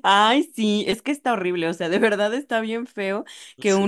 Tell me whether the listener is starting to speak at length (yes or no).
no